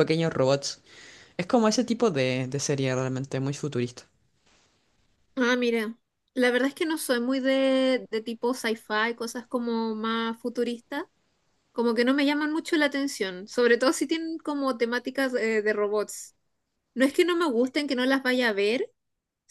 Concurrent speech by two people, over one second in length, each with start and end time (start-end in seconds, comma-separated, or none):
none